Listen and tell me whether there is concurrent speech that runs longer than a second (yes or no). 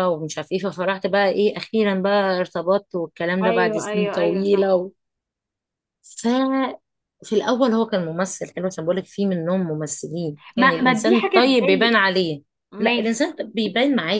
yes